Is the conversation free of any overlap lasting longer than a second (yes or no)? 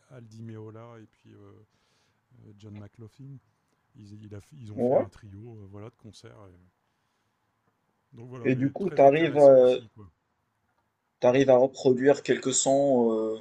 no